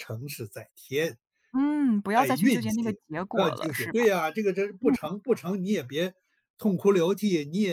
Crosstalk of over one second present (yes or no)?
yes